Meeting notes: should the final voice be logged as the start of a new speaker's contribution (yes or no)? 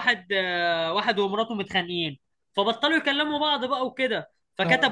no